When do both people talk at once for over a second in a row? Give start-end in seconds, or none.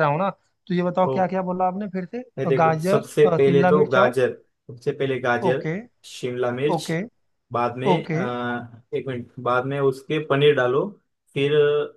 2.4-4.1